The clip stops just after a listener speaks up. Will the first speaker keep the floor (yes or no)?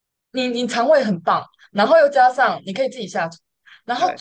yes